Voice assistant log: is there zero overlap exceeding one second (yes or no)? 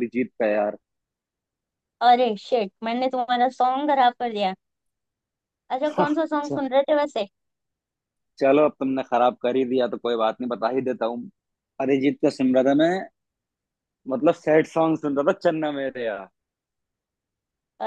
yes